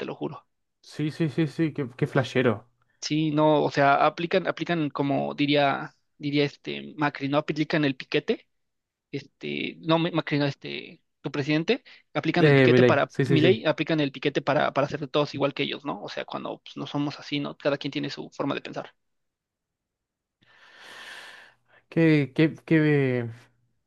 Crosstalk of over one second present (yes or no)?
yes